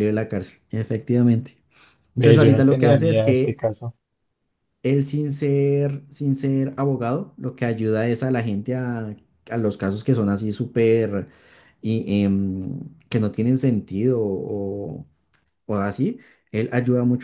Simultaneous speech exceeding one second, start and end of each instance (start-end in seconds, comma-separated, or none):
2.2-3.6